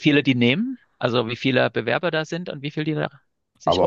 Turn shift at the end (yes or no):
yes